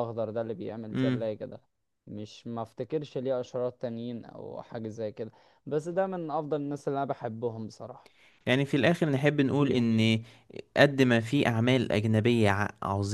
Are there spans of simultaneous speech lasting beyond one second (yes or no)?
no